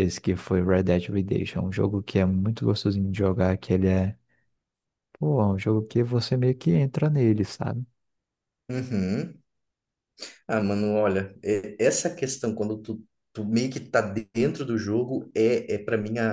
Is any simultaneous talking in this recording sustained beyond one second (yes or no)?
no